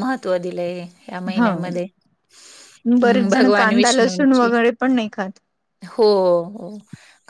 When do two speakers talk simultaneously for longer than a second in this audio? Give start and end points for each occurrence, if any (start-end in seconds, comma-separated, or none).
3.0-4.5